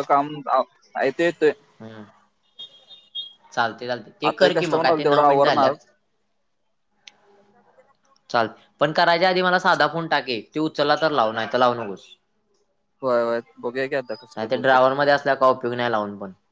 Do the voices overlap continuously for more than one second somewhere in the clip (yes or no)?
yes